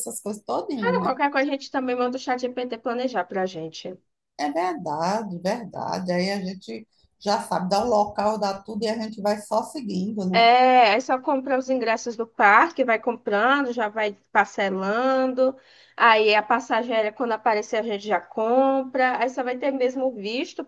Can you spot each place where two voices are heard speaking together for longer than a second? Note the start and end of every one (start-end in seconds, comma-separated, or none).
none